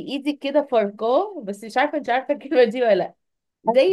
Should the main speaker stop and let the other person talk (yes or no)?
no